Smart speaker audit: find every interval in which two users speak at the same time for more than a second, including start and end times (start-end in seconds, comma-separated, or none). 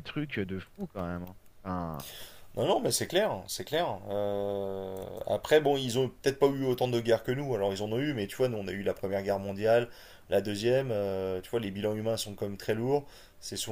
none